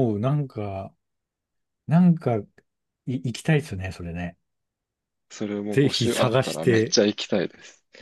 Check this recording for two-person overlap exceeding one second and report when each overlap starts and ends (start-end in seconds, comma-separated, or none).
5.7-7.0